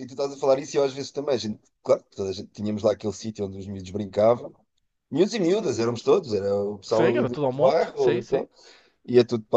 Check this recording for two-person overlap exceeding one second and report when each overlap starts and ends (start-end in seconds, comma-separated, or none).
6.9-8.4